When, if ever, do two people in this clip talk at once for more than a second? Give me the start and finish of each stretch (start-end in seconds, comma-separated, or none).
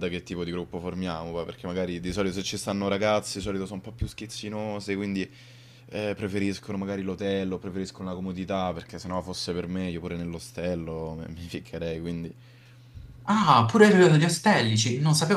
none